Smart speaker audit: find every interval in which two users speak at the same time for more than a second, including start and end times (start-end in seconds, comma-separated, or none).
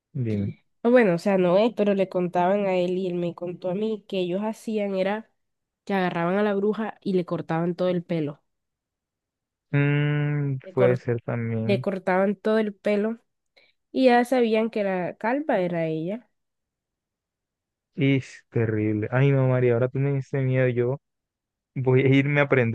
none